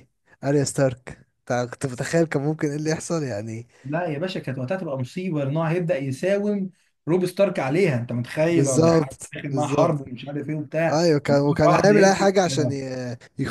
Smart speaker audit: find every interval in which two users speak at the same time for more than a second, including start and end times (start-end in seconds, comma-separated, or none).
8.5-10.0, 10.9-12.8